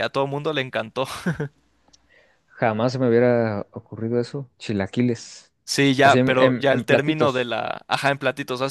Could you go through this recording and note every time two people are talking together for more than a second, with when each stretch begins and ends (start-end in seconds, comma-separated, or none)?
6.0-7.6